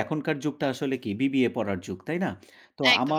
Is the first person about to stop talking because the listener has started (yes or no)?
no